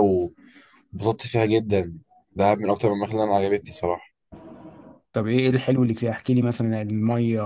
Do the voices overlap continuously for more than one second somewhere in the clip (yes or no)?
no